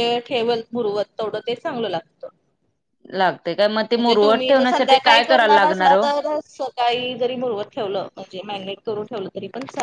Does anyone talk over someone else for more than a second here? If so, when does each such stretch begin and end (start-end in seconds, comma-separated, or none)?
4.0-6.0